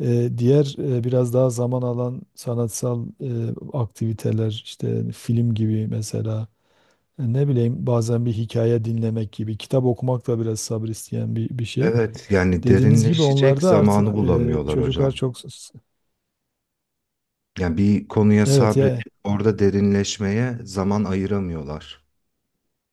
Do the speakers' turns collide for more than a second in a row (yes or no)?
yes